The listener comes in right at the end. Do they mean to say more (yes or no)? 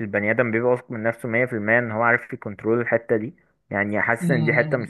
no